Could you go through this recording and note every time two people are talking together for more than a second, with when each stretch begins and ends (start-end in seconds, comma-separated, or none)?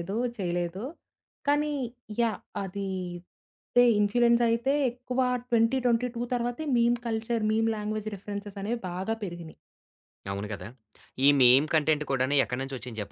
none